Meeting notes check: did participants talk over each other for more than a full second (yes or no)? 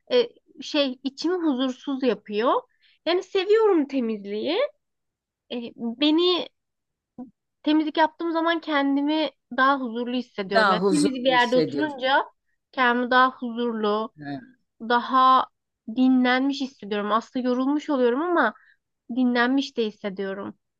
yes